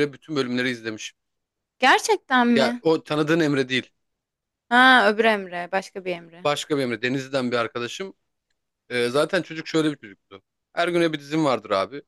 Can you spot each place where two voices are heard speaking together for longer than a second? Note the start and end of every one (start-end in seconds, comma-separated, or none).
none